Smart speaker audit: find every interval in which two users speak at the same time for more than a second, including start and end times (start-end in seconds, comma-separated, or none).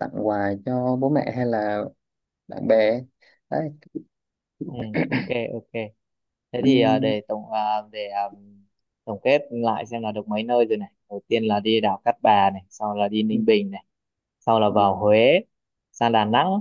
none